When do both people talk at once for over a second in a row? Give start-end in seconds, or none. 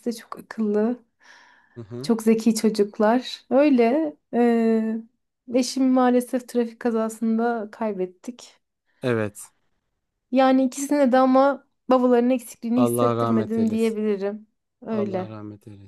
12.8-14.0